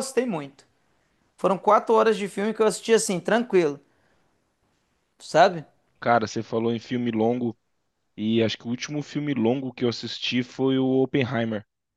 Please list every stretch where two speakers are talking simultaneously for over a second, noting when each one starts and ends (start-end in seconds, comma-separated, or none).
none